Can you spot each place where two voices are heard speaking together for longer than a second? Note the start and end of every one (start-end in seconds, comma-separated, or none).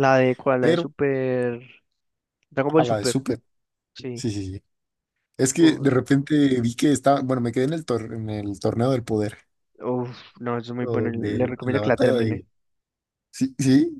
10.8-12.4